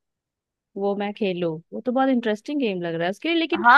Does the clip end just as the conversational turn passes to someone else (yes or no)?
yes